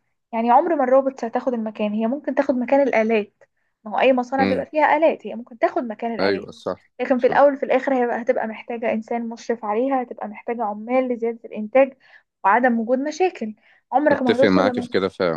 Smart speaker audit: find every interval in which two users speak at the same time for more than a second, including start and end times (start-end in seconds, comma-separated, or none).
none